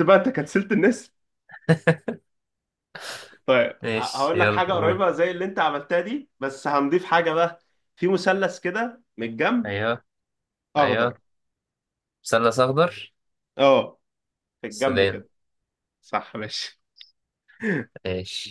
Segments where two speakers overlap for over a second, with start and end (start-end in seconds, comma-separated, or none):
3.8-5.1